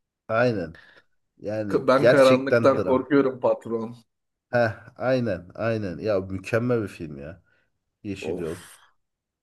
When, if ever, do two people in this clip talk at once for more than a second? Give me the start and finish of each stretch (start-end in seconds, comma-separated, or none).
1.7-3.0